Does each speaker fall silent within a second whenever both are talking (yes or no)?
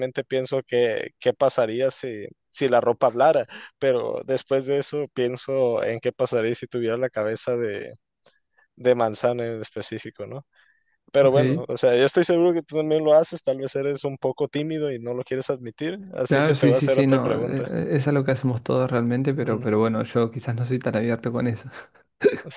no